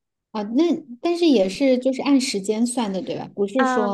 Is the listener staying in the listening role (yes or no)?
no